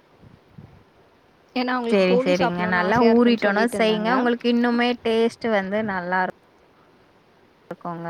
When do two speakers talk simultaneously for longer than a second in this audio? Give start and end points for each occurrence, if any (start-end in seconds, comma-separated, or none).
1.9-4.2